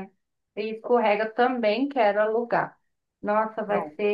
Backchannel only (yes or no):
yes